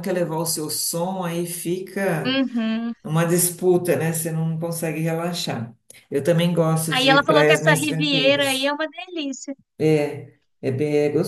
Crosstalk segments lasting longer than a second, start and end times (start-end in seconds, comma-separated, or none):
6.9-8.7